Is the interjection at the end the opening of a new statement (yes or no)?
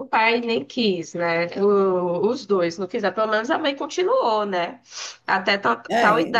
no